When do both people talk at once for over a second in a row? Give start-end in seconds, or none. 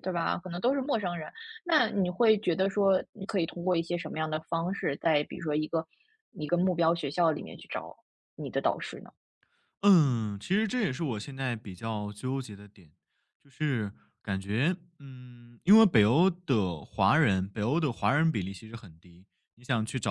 none